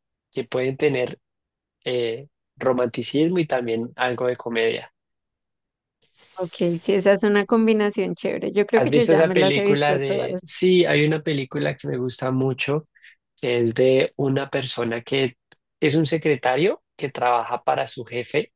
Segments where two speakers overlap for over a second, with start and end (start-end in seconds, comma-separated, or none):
8.8-10.6